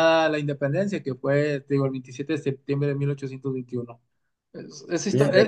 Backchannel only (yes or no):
yes